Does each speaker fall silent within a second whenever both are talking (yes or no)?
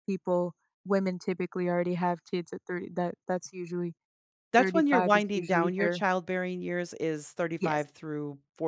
no